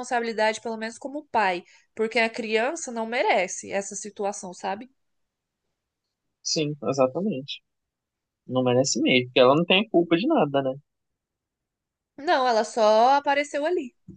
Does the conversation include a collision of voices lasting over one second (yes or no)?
no